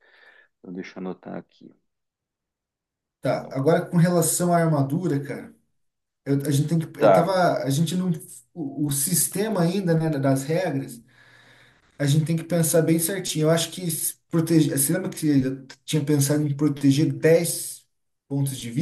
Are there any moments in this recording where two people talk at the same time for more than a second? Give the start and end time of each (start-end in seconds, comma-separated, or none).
none